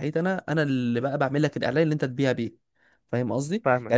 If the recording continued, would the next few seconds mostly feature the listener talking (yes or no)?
no